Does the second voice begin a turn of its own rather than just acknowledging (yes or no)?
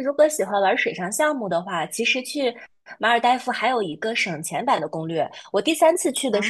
no